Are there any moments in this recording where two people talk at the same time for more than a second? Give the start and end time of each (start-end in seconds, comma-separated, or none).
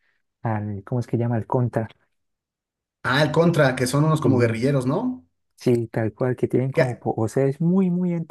none